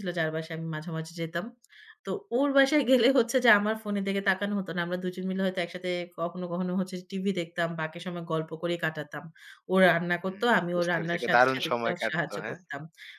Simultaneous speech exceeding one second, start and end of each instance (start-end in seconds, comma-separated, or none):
10.2-12.6